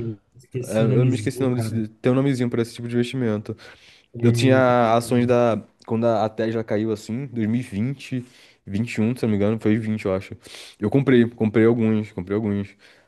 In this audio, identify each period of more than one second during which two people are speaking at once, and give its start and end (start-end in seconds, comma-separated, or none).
0.6-1.8